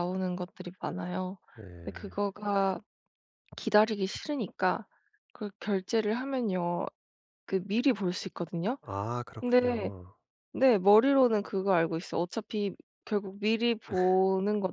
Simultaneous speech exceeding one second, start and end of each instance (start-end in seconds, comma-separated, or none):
none